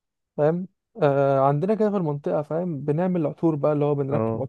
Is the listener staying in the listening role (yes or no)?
yes